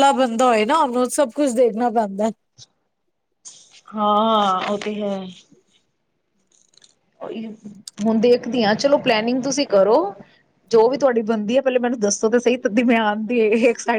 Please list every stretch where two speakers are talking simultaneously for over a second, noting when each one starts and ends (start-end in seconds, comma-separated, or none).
none